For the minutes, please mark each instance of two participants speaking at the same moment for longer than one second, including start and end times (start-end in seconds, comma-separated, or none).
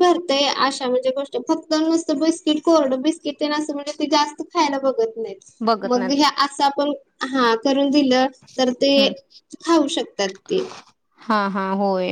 none